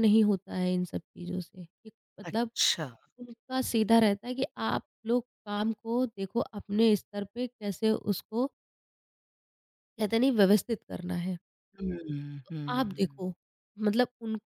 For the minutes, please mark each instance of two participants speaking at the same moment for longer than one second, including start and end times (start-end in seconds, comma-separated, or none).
none